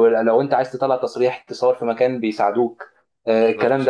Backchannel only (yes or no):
yes